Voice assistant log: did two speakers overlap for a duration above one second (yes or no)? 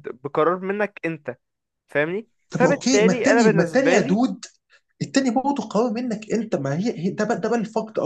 yes